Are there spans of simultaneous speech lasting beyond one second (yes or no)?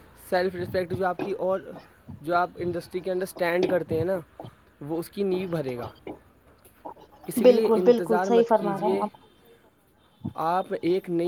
yes